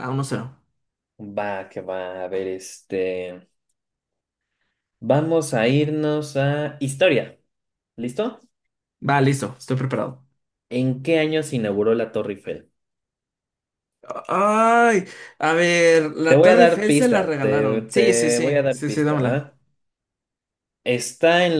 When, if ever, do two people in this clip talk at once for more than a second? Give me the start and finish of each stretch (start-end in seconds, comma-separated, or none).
16.3-19.5